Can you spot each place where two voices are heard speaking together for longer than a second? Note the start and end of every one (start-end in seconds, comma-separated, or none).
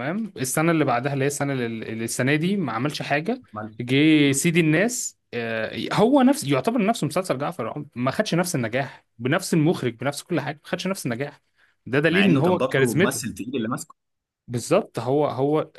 12.1-13.4